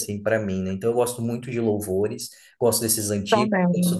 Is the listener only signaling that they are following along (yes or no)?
yes